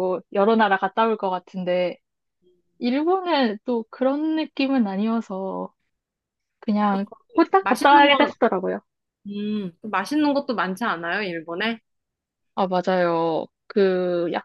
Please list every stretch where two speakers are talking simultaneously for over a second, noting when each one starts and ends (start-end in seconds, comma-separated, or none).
6.9-8.3